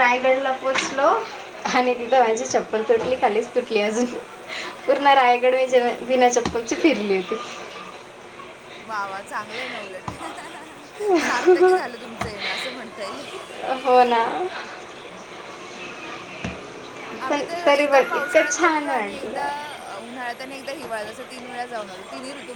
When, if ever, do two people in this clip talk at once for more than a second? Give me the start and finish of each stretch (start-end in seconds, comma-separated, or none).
17.3-19.4